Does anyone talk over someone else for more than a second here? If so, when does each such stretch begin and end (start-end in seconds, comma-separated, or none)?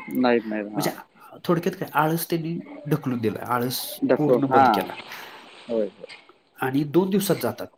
none